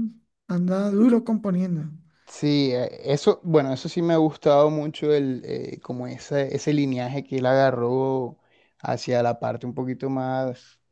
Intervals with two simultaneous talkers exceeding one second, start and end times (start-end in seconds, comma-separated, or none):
none